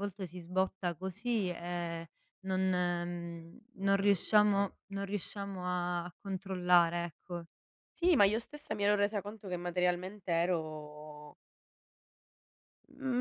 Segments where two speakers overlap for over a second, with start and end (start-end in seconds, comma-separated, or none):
none